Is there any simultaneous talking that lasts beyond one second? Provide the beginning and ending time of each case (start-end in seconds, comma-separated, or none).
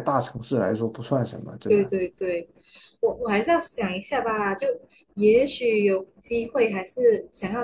none